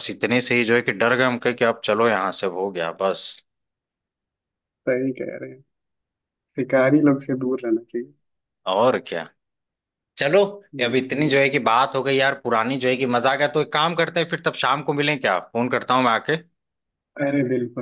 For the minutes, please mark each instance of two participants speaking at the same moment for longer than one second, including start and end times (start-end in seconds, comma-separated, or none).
none